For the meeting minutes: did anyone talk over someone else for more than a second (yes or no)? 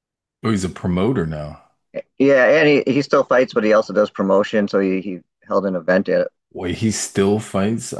no